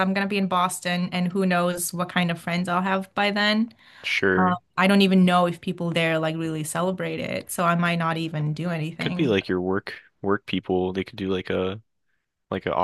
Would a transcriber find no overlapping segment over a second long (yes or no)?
yes